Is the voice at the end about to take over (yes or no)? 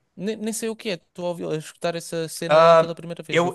yes